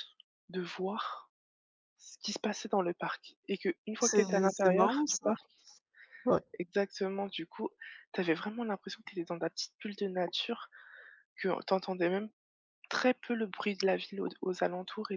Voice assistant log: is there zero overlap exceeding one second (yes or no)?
no